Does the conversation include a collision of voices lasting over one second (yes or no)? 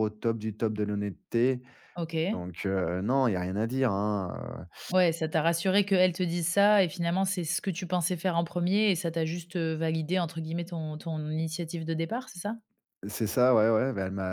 no